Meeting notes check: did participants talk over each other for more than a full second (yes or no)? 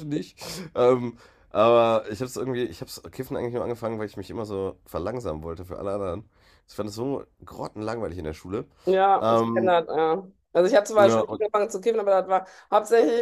no